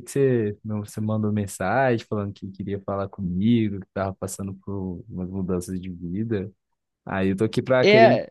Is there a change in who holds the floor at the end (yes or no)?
no